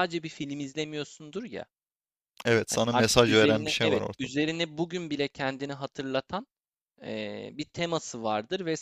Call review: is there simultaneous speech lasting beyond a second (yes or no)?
yes